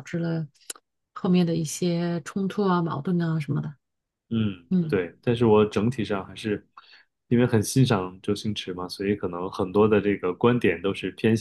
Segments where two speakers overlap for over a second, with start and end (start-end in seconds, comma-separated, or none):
none